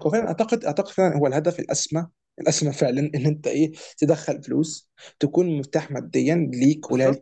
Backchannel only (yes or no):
no